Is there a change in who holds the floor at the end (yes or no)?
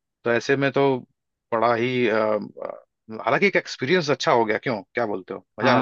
yes